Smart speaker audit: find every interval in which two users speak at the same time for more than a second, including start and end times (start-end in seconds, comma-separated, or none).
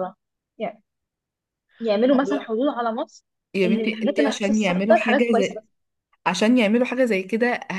3.6-5.6